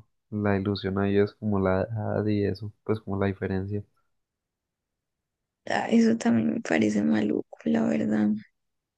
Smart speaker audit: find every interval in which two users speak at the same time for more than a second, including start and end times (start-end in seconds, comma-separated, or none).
none